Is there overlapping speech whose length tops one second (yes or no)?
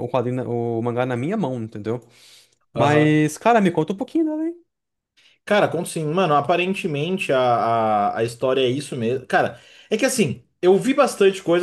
no